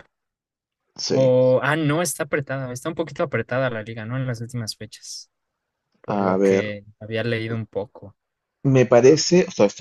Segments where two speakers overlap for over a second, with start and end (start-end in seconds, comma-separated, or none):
none